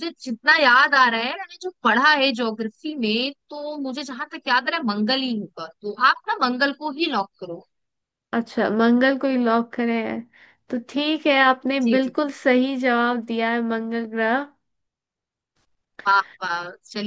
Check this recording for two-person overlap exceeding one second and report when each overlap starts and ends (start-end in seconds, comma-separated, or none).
none